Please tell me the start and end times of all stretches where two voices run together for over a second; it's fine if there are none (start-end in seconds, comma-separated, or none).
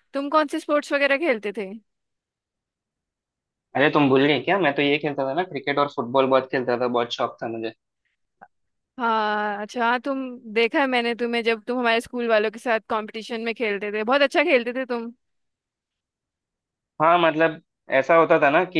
none